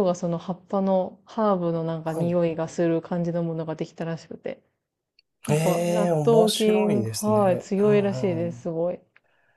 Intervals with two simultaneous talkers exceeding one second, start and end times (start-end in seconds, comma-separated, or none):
5.5-8.7